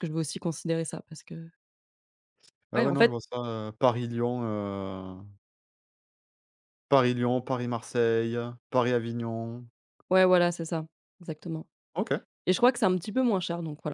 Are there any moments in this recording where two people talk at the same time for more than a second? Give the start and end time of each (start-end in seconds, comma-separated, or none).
none